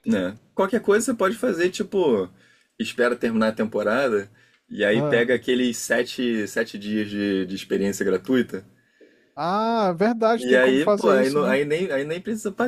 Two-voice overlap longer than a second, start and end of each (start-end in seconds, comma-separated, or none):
10.4-11.6